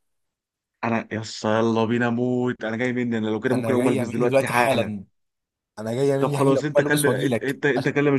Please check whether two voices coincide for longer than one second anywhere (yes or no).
yes